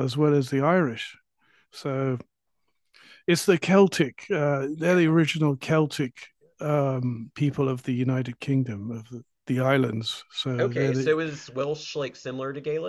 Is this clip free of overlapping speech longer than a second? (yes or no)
yes